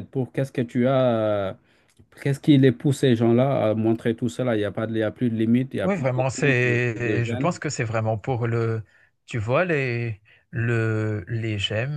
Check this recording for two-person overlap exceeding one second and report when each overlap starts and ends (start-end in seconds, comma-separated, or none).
5.8-7.5